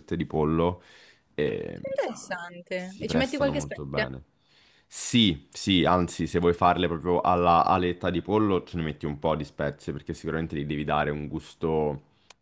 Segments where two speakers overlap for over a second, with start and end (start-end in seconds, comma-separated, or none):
2.7-4.1